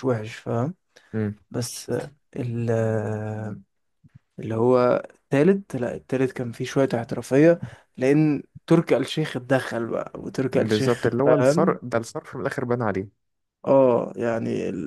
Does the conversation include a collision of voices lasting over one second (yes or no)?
yes